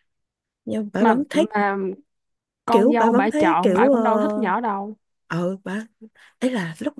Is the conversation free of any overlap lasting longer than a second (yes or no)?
no